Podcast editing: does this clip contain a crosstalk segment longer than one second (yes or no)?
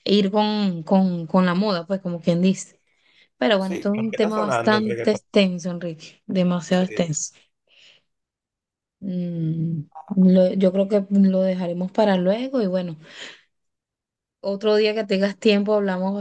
yes